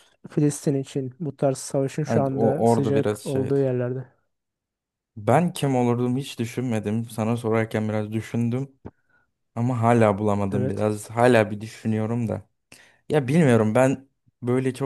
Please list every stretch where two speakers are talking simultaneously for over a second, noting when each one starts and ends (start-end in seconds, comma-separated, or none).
2.0-3.6